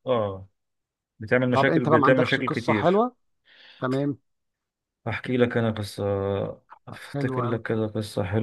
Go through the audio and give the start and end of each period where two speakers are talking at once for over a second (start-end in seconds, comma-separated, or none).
1.5-3.0